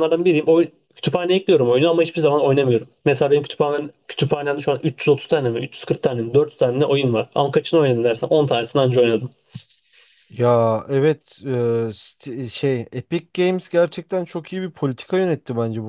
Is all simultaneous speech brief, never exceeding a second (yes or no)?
yes